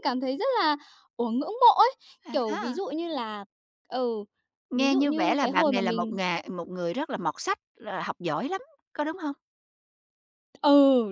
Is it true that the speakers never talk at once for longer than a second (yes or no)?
no